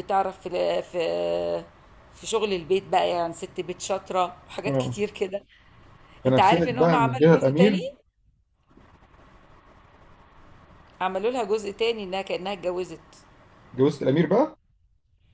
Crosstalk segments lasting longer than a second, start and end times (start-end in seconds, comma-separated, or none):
6.3-7.8